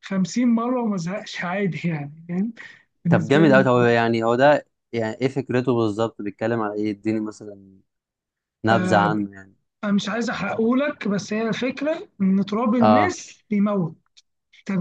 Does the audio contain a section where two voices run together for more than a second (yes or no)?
no